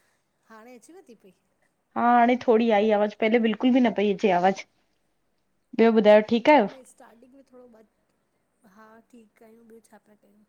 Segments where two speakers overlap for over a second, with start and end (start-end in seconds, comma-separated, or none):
none